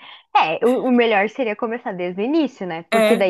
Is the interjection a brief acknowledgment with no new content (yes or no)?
yes